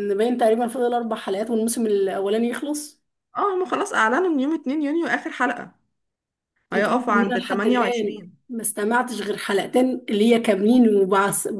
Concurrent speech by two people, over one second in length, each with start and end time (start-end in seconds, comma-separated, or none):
6.7-8.4